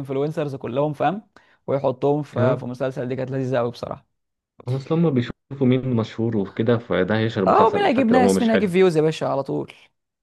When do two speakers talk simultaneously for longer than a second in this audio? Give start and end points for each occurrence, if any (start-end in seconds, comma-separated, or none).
7.5-8.7